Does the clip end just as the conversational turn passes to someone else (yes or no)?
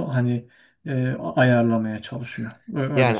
yes